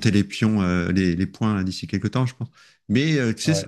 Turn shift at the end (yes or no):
no